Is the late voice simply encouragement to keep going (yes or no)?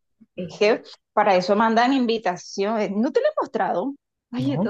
yes